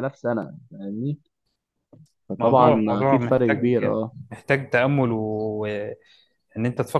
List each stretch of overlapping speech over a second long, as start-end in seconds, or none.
2.4-3.7